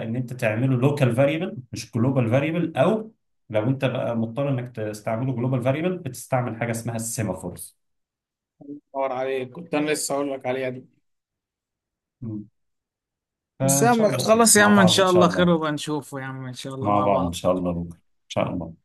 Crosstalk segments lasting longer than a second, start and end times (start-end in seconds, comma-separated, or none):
13.6-15.6